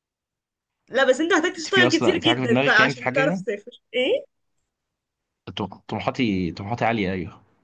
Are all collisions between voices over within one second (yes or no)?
no